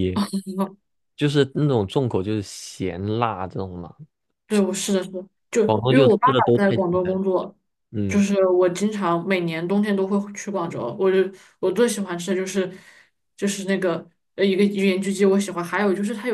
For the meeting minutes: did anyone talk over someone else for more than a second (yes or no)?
yes